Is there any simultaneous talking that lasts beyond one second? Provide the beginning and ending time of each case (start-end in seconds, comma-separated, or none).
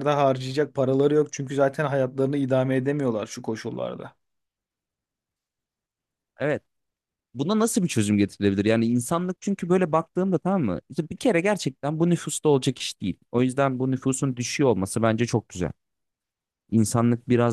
none